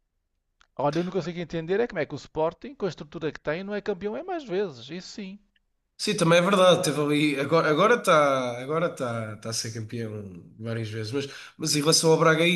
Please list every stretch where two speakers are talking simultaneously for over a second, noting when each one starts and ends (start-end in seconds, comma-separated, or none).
none